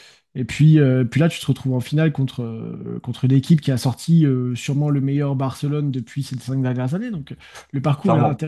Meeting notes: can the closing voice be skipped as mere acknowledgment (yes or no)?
yes